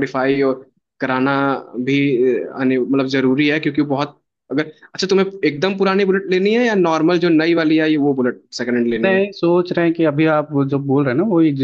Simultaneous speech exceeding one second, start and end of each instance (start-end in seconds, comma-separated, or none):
none